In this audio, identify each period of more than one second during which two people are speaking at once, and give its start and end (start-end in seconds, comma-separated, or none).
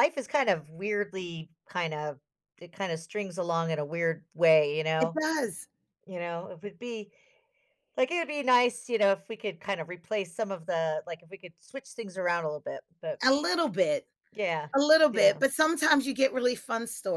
none